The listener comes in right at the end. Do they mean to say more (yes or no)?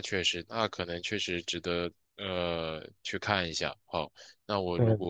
no